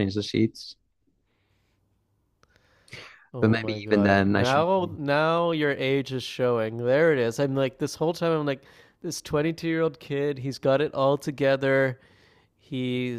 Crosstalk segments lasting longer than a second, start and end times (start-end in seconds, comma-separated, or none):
3.4-4.7